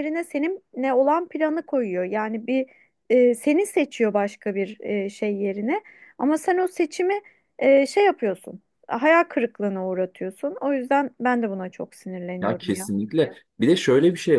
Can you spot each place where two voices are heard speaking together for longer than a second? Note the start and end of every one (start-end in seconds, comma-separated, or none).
none